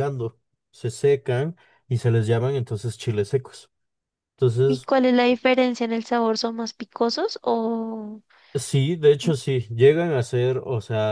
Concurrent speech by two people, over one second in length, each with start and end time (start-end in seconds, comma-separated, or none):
none